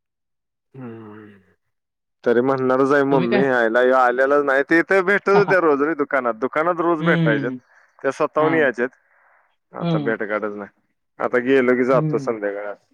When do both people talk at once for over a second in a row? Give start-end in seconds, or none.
none